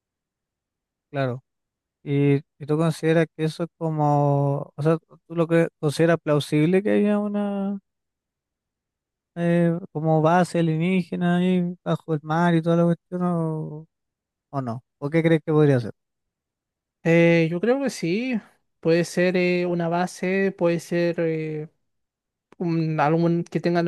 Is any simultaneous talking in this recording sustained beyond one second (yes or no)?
no